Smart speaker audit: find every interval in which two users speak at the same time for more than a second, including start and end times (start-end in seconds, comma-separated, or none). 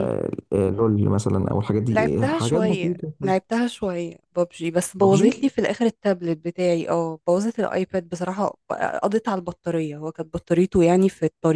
1.9-3.1